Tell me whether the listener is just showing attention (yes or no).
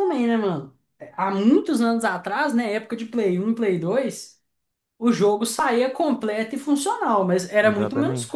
yes